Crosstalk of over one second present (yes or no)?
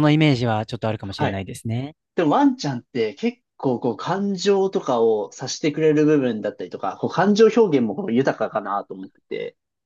no